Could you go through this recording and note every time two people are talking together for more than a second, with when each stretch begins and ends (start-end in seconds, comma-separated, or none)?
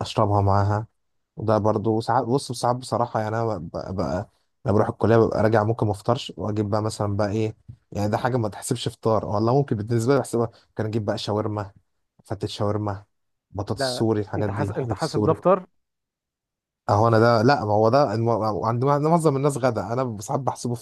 13.7-15.4